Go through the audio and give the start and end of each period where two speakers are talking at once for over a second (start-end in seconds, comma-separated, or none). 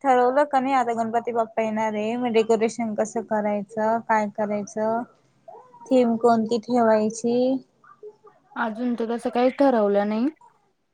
none